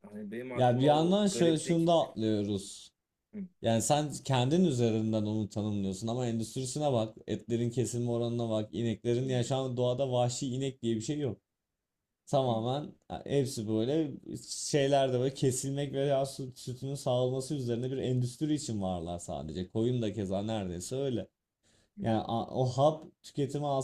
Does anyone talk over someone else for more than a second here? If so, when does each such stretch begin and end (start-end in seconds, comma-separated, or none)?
0.5-1.9